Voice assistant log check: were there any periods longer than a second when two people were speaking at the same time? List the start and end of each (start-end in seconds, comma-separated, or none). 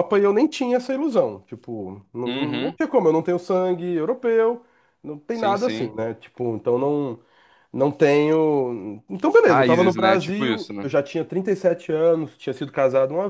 9.5-10.9